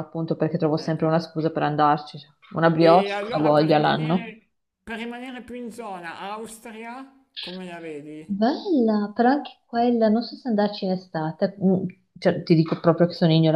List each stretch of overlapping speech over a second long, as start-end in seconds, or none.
2.8-4.3